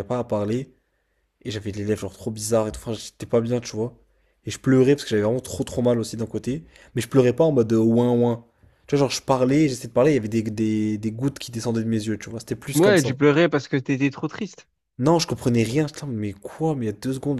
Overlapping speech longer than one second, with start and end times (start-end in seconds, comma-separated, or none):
none